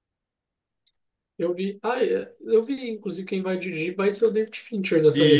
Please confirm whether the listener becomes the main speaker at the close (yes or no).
yes